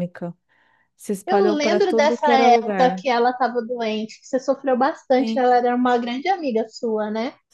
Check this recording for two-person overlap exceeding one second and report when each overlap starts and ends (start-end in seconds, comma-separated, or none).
1.3-3.0